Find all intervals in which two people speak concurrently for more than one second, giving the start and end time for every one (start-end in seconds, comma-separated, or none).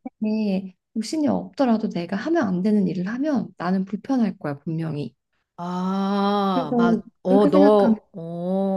6.5-8.0